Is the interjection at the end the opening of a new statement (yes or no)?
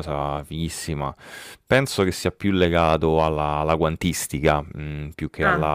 no